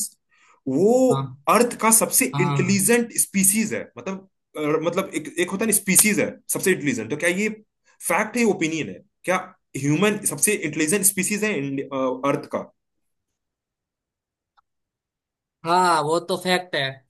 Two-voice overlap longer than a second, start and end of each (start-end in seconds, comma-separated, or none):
none